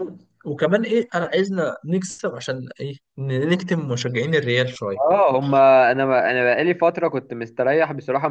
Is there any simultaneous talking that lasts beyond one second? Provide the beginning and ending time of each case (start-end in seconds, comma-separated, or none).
none